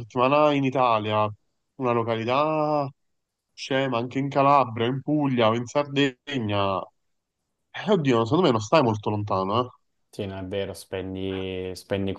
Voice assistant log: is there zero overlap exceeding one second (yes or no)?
yes